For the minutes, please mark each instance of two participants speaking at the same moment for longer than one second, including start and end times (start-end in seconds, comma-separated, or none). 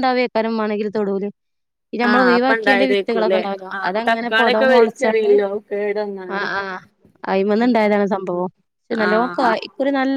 2.1-5.3